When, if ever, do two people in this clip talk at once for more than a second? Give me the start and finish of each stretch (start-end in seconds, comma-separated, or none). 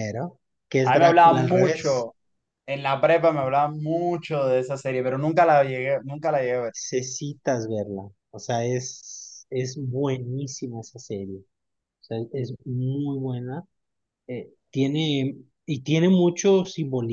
0.8-2.1